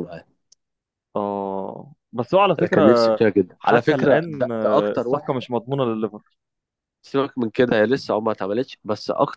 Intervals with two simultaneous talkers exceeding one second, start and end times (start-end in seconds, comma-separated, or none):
3.6-5.4